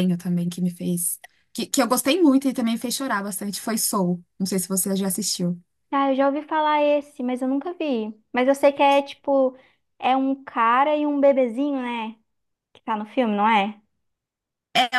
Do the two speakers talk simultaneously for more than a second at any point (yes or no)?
no